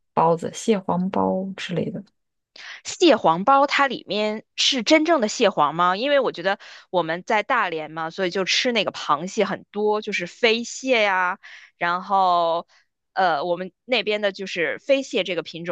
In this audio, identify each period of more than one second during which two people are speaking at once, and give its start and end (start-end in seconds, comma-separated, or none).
none